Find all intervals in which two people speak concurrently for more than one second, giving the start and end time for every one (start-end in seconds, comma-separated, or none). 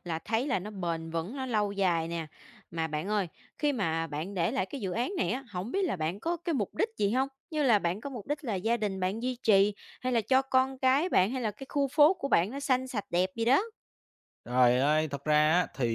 none